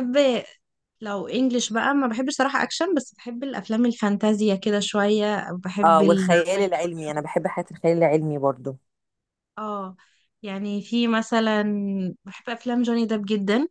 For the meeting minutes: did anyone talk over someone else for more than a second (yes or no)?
yes